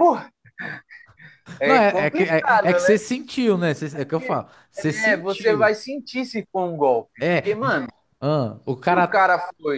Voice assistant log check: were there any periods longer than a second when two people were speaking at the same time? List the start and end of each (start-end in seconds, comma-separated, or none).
1.6-3.0, 3.9-5.7